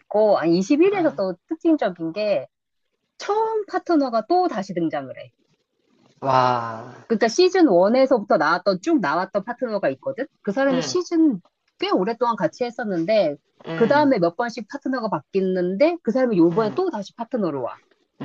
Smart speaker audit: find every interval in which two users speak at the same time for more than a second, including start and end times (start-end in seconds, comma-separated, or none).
none